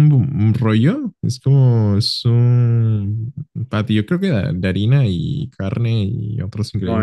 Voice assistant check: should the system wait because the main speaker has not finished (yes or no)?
no